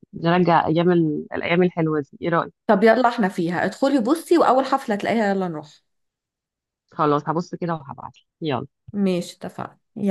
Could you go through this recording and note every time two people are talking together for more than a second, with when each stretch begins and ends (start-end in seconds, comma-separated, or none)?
none